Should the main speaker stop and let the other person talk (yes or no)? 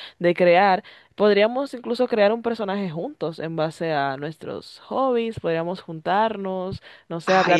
yes